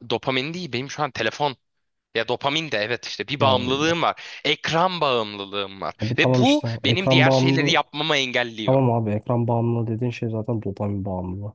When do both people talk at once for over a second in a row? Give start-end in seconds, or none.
6.0-7.7